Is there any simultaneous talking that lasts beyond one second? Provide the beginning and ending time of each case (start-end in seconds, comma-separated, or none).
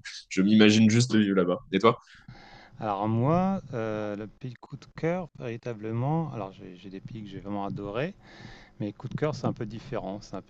none